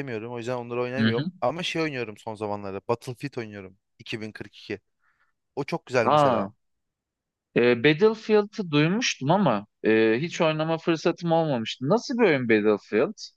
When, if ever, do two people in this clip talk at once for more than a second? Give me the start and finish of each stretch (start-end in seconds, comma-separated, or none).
none